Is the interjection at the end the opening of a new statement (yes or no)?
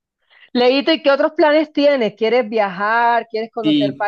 yes